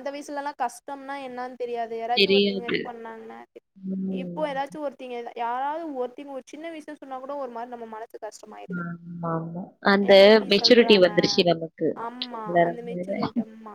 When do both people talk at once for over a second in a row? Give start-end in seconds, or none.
none